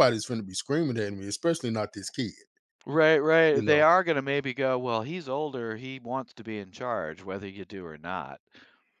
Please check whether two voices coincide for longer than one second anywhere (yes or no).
no